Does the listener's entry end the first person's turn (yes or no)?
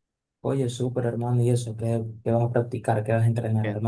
yes